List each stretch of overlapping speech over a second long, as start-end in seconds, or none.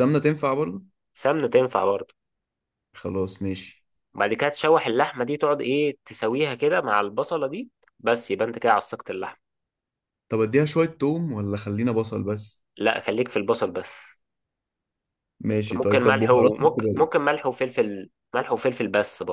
15.8-17.1